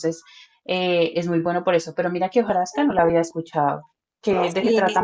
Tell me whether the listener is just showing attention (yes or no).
no